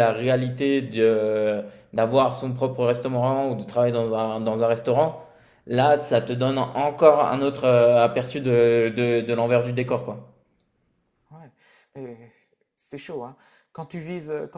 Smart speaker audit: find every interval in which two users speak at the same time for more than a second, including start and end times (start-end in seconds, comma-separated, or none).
none